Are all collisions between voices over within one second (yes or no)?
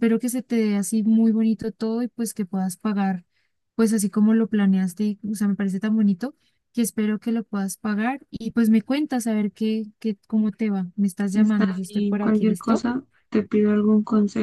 no